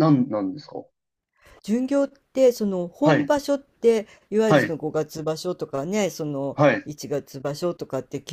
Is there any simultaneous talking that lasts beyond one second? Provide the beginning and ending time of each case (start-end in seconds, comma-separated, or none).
none